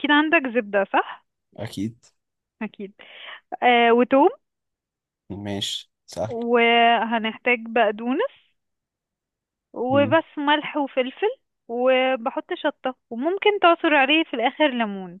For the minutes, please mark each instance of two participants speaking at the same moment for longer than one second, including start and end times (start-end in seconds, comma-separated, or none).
none